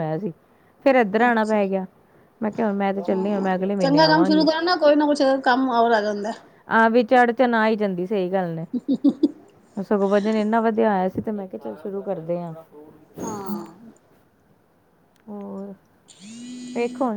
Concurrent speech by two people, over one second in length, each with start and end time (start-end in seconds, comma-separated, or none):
3.1-4.5